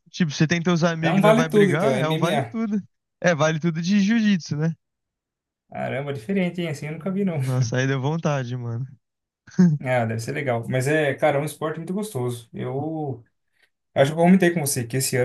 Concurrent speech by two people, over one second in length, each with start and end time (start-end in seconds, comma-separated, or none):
1.0-2.6